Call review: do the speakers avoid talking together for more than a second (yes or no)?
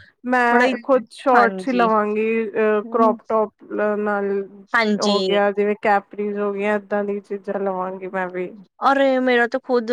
yes